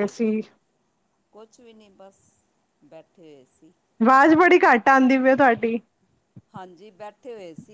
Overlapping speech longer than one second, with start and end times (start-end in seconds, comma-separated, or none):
none